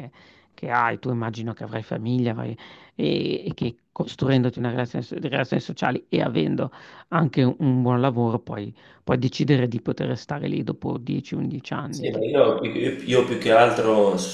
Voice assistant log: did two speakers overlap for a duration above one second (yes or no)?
no